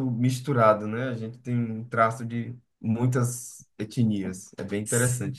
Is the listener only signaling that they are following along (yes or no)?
no